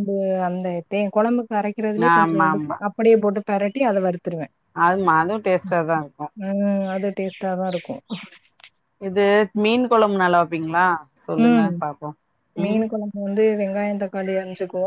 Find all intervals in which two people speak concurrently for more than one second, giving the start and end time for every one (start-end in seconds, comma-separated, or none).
none